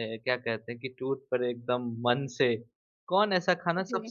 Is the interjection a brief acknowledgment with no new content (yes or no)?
yes